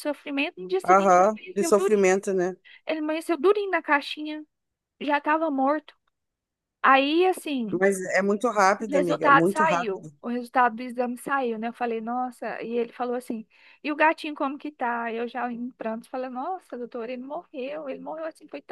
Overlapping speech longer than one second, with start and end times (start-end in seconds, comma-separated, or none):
0.8-2.1, 8.8-10.1